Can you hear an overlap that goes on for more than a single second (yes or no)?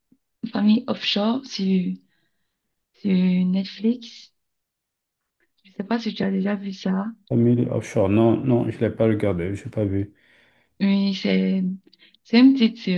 no